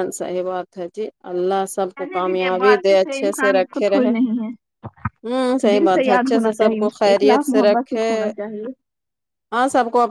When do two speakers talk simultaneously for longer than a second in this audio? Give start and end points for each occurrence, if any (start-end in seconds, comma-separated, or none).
2.0-4.1, 5.5-8.1